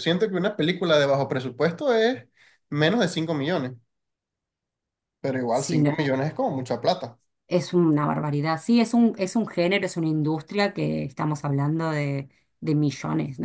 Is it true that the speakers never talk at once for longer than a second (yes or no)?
yes